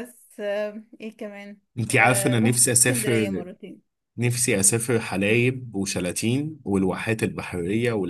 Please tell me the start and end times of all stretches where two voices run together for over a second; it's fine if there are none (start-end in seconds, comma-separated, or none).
1.8-3.4